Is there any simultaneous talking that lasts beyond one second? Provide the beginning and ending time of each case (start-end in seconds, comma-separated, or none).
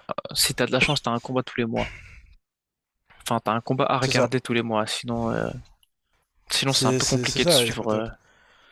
6.7-8.1